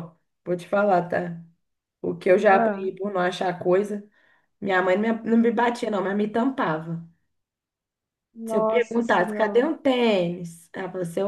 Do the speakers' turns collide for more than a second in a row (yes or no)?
yes